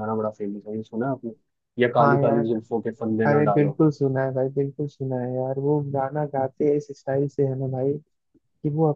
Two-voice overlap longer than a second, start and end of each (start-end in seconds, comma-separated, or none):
none